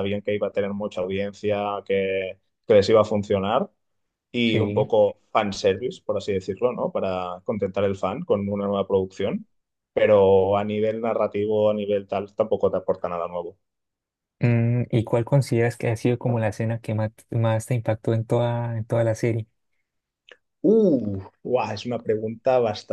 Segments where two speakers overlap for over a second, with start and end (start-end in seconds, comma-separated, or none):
none